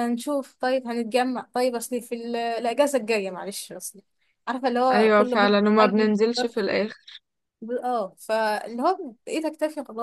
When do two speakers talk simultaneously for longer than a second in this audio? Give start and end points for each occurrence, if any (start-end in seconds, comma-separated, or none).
4.9-6.5